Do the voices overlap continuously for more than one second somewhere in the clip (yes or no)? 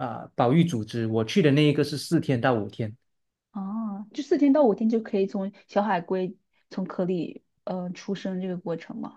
no